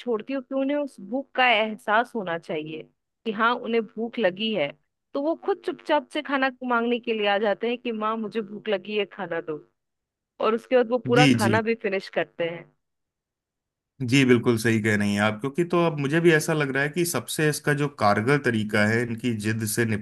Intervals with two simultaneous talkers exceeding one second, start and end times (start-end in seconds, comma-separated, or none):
none